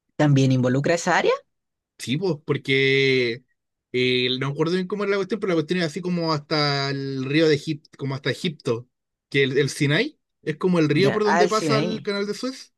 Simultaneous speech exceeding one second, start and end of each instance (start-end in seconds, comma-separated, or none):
10.9-12.1